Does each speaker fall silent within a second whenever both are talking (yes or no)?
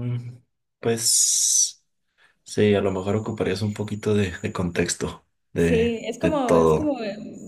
no